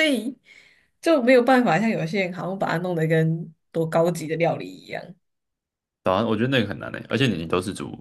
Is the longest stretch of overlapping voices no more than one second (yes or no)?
yes